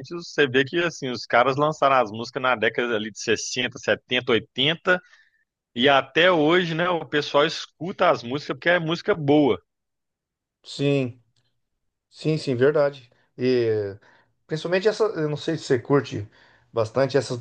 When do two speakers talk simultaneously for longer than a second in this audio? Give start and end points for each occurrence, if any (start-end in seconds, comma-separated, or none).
none